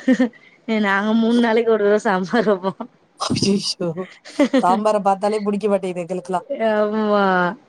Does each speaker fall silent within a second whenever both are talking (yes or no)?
yes